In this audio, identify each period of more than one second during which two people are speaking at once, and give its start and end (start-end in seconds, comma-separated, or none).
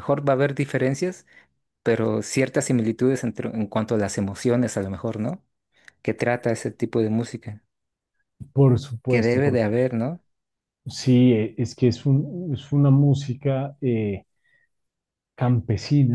none